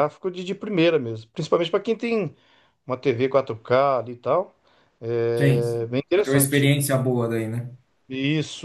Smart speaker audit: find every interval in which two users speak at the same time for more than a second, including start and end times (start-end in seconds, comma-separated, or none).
5.3-6.7